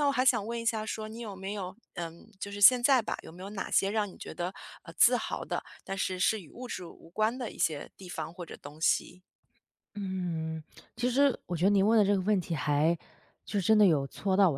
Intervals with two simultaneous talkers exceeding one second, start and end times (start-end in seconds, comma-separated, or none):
none